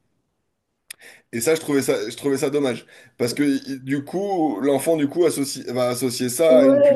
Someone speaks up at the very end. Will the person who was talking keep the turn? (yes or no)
no